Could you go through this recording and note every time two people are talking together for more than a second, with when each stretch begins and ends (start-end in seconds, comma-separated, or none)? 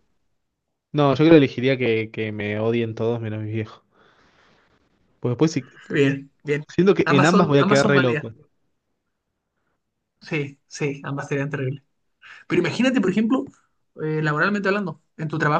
7.0-8.3